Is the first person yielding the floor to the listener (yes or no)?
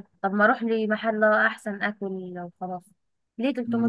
yes